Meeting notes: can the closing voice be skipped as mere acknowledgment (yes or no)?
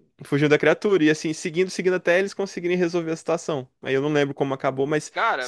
yes